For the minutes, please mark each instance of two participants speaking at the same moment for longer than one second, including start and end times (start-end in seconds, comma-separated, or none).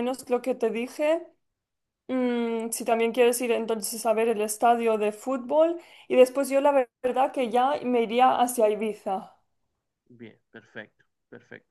none